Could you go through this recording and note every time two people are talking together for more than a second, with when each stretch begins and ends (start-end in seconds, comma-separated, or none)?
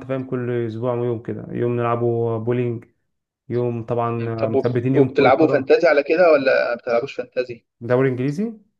4.2-5.7